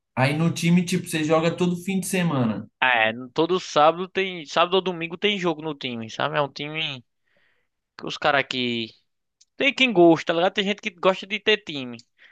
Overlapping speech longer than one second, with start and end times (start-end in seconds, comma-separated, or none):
none